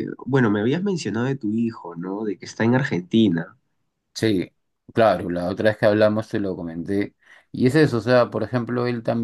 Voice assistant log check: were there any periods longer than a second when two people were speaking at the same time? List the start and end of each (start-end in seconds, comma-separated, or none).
none